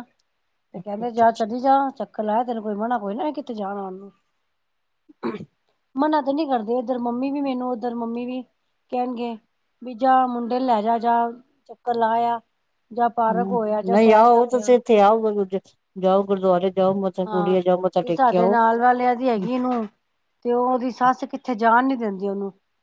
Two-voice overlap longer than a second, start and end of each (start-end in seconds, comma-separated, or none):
none